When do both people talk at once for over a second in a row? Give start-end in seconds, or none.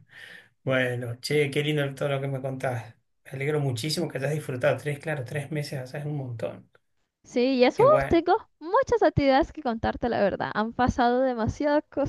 none